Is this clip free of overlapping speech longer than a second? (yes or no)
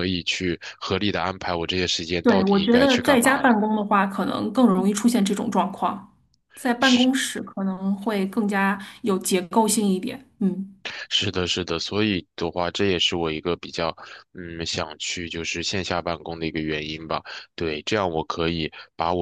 no